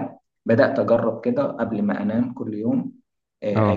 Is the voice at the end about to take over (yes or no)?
no